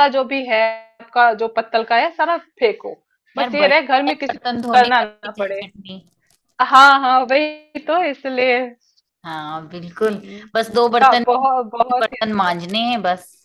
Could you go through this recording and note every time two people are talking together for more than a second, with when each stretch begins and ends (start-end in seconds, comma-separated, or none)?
3.4-5.6